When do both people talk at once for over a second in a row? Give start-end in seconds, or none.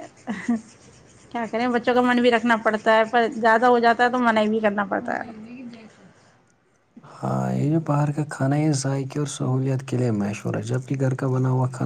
none